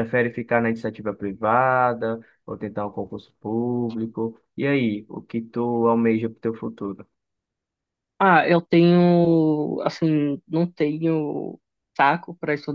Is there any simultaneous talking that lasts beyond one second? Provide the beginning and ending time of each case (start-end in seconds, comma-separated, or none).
none